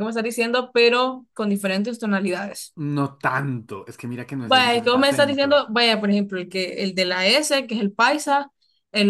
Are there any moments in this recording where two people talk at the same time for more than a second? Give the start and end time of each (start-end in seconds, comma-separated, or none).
4.5-5.7